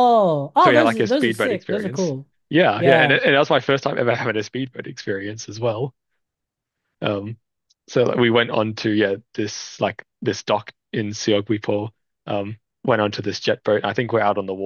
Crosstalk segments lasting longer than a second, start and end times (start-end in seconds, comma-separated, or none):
0.6-2.1